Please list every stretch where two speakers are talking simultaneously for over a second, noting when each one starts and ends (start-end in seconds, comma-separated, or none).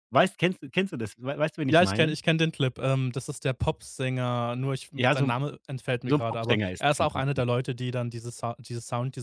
6.0-7.5